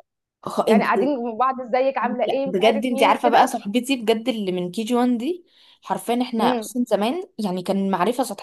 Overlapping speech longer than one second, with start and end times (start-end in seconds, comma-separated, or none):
2.0-3.5